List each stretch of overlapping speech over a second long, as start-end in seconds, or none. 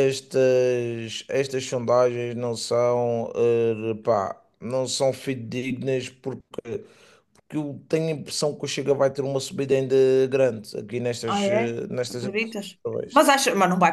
11.3-13.2